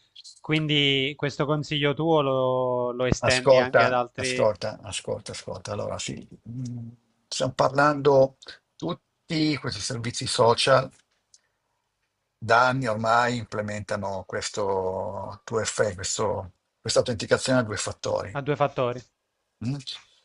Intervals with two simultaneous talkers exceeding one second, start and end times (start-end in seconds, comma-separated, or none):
3.2-4.5